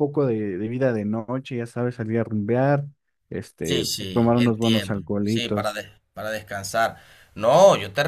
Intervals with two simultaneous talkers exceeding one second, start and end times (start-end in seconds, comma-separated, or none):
3.6-5.8